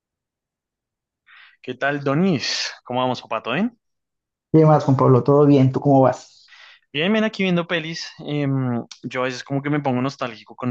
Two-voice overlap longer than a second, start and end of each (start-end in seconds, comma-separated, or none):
none